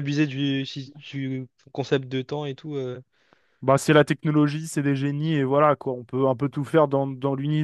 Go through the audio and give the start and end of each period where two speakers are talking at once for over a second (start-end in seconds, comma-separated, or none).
none